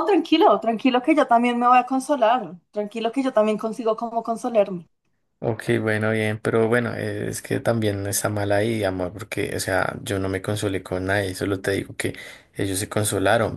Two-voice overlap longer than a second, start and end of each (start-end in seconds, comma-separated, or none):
none